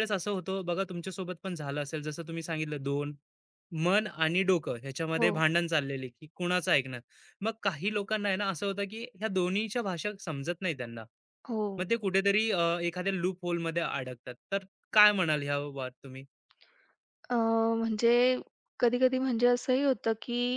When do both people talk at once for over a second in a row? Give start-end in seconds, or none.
none